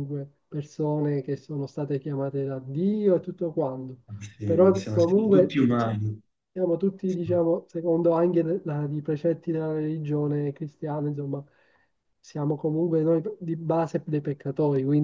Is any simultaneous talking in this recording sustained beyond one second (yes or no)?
yes